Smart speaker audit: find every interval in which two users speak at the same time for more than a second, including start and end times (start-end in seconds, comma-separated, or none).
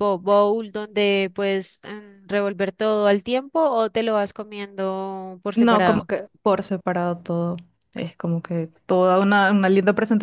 none